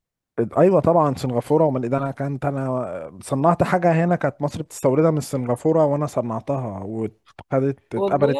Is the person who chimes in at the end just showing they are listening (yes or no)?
yes